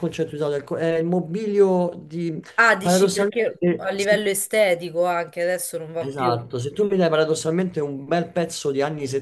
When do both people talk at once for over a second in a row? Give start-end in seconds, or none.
2.8-4.3